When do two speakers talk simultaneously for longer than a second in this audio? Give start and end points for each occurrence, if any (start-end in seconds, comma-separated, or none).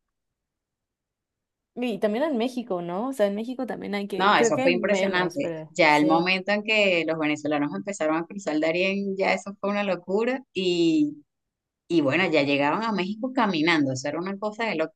4.1-6.3